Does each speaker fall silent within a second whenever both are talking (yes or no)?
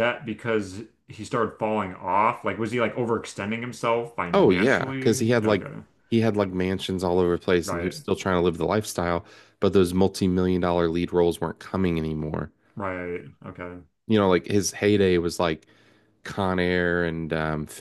no